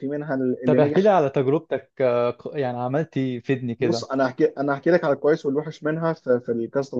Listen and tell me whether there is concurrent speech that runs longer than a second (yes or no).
no